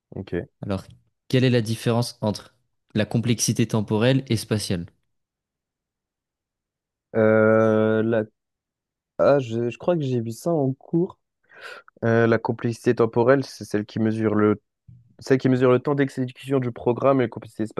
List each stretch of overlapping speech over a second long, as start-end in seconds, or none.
none